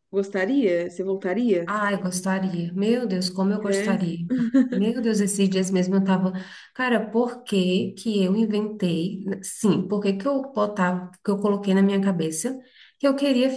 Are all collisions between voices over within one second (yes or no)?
yes